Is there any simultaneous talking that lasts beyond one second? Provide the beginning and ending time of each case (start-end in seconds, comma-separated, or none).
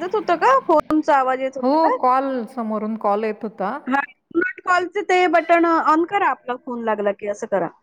none